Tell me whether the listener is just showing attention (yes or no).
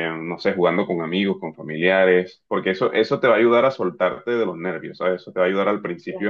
yes